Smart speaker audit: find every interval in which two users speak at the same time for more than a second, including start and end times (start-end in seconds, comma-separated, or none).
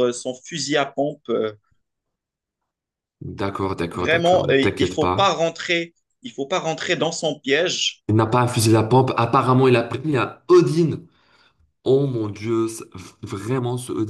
3.9-5.3